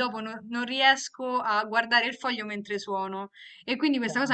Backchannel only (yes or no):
yes